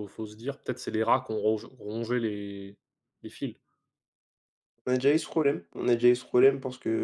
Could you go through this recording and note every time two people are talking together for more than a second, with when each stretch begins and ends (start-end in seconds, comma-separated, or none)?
none